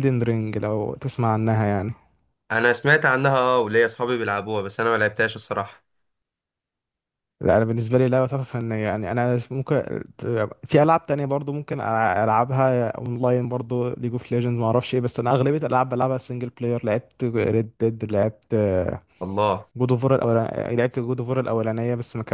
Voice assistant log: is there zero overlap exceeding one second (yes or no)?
yes